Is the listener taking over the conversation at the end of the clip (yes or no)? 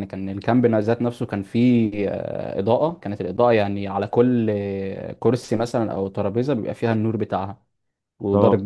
no